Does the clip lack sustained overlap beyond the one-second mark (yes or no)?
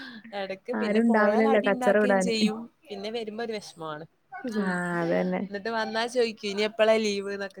no